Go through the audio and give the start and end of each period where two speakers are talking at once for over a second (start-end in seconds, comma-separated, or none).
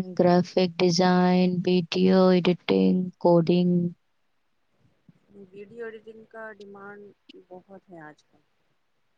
none